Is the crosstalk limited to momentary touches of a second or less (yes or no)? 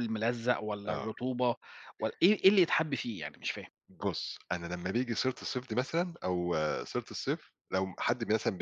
yes